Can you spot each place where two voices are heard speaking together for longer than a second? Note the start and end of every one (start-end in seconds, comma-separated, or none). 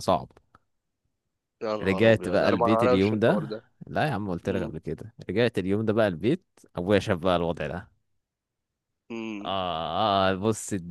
1.8-3.6